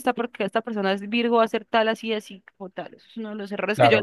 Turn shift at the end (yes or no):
no